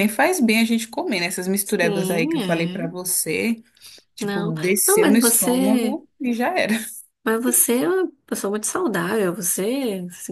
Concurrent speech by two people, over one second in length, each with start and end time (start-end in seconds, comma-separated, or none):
1.6-2.9, 4.2-6.0